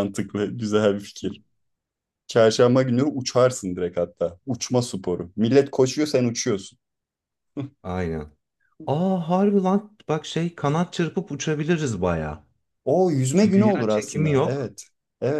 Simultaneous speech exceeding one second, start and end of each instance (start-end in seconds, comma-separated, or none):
13.3-14.7